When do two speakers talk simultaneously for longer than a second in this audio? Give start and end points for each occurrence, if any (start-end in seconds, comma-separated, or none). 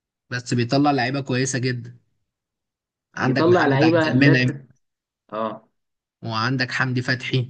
3.2-4.5